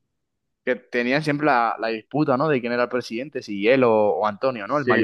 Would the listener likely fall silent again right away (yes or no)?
no